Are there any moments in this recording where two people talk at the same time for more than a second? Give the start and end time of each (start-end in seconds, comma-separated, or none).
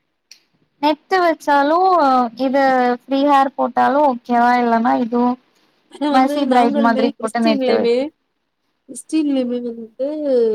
6.1-7.8